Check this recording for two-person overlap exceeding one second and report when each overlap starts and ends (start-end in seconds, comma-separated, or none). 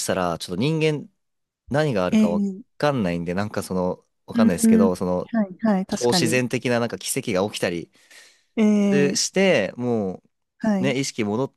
none